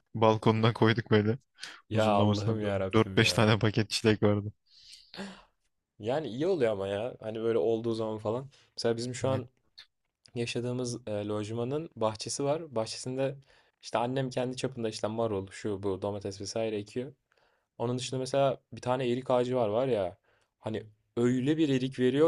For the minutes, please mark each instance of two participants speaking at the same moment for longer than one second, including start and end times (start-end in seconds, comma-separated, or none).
1.9-3.6